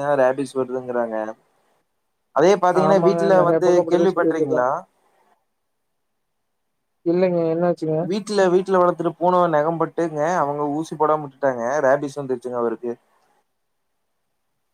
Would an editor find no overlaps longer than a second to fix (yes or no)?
no